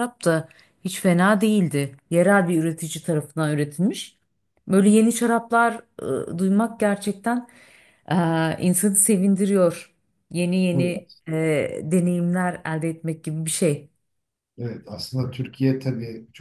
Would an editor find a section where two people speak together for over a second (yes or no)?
no